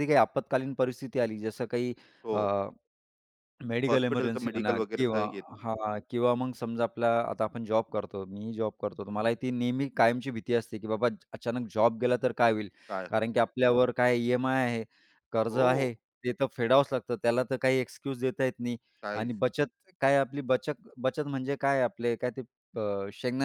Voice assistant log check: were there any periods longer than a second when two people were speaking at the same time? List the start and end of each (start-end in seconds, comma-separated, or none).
3.9-5.2